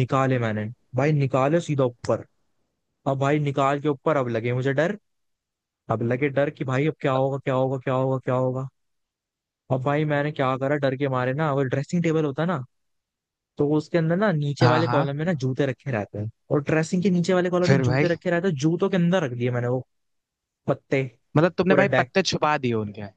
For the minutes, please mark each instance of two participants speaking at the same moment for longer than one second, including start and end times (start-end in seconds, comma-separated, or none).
none